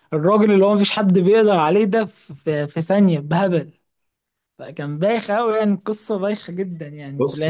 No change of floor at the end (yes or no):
no